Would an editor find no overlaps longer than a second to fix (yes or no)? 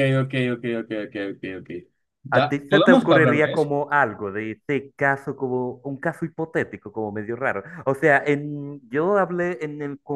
no